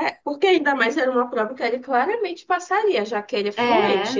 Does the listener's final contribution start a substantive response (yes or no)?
no